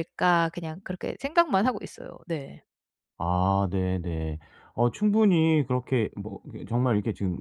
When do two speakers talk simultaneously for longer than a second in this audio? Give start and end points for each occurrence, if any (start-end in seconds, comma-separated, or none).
none